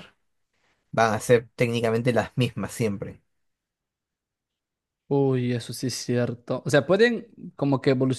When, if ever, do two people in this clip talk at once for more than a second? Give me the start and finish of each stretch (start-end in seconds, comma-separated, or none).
none